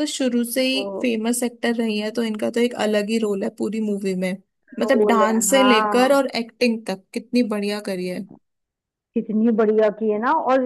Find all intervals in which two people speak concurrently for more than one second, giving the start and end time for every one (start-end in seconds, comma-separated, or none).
4.8-6.2